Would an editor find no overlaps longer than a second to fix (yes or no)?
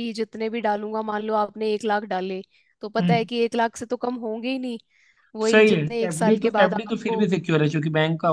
no